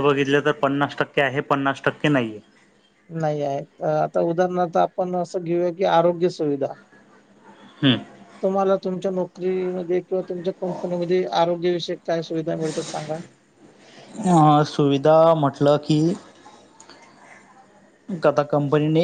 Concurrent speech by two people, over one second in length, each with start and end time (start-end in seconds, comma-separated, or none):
none